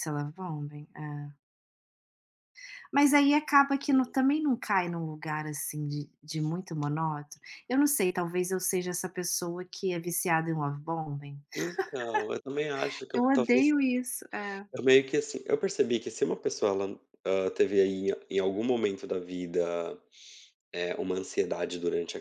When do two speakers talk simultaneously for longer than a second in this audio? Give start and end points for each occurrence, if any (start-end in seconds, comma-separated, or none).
none